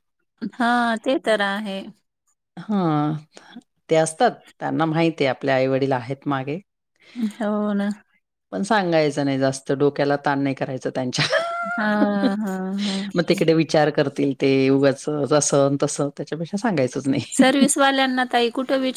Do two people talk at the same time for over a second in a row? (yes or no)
no